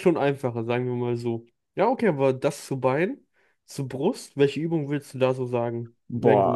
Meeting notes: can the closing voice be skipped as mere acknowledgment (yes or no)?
no